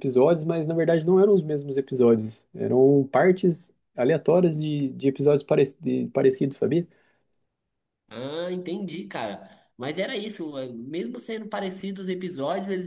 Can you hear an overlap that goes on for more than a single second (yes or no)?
no